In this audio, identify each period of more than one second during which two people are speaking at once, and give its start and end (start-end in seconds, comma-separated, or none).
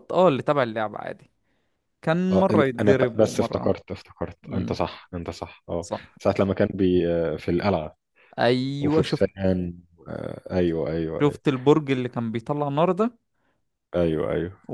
2.3-3.8